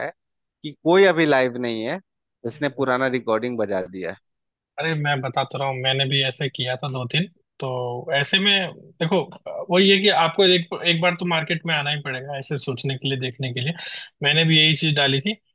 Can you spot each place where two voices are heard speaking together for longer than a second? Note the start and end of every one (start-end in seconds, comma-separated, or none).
none